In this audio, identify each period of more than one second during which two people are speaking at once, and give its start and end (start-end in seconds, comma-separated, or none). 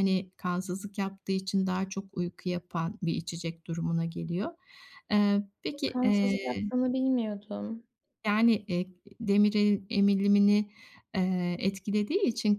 none